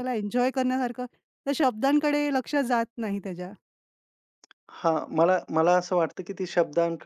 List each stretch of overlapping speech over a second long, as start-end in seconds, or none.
none